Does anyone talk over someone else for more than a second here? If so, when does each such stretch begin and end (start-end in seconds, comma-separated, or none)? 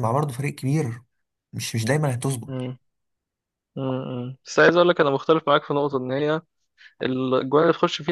none